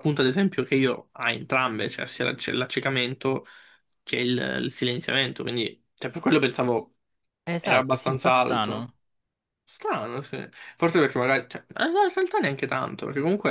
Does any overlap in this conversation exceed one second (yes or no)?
yes